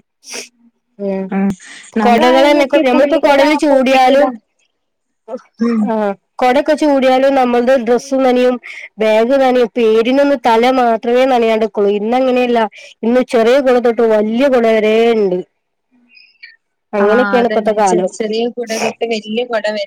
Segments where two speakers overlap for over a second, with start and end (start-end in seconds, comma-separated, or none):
2.0-4.2